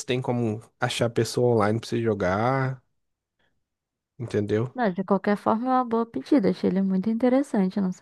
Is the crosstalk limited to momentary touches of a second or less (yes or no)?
yes